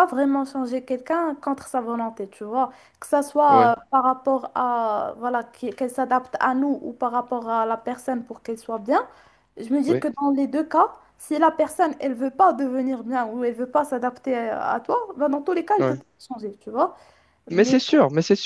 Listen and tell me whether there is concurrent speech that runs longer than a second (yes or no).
no